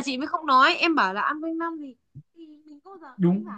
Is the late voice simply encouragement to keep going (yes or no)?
yes